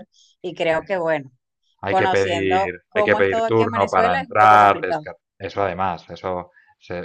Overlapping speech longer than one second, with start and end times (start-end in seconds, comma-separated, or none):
1.9-5.1